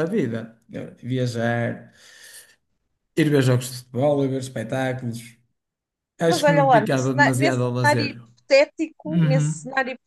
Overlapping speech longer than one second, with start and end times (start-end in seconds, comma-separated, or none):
6.2-8.1